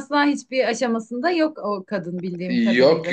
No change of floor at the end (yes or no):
no